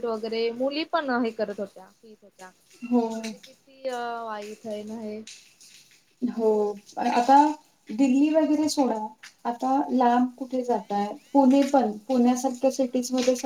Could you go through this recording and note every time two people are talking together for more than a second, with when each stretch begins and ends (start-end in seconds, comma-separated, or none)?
none